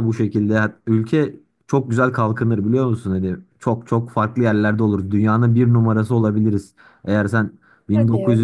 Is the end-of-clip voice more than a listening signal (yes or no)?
no